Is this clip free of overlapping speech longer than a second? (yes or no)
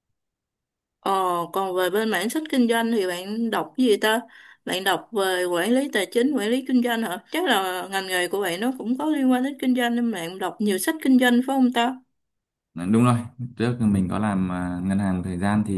yes